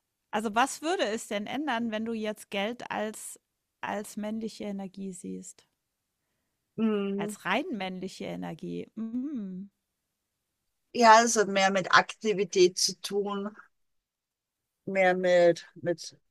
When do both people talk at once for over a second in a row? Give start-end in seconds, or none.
none